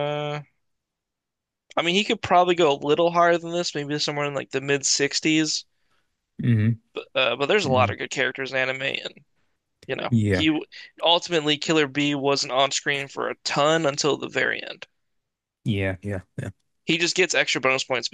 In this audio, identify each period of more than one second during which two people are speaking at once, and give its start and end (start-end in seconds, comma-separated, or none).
none